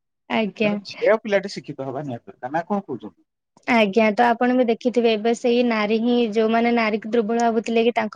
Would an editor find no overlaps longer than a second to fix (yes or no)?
yes